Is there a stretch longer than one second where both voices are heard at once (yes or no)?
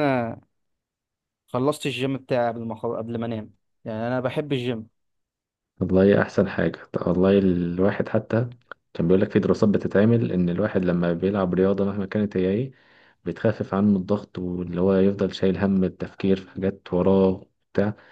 no